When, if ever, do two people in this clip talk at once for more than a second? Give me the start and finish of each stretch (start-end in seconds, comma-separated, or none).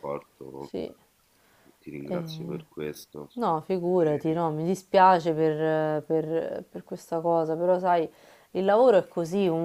none